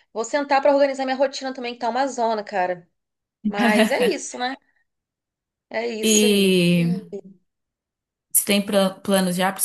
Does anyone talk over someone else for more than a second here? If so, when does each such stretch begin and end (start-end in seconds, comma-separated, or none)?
none